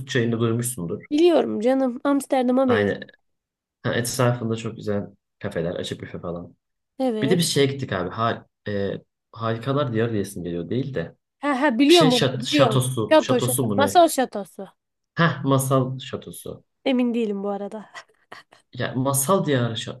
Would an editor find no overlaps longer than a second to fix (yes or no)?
no